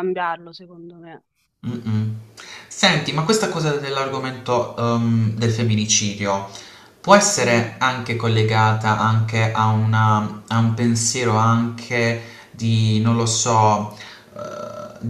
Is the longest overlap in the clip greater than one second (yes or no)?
no